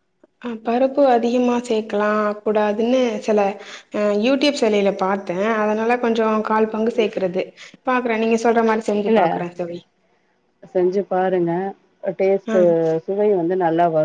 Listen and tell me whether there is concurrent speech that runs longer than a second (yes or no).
no